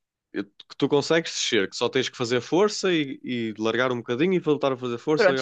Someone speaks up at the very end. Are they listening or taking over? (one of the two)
taking over